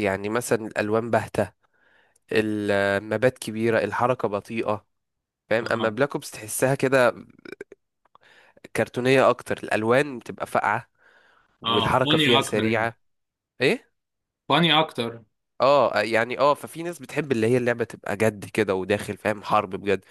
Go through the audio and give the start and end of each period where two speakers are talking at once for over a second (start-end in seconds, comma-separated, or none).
11.7-12.9